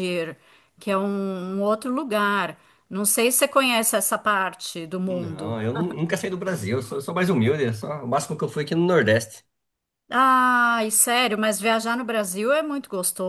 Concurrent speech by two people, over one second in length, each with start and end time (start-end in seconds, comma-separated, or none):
none